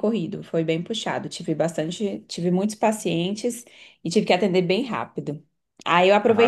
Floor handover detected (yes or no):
no